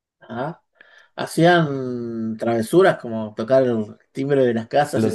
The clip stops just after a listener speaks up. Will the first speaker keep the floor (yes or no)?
no